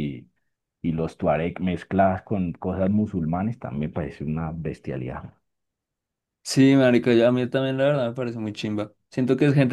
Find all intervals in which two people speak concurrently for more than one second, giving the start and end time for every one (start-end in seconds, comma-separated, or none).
none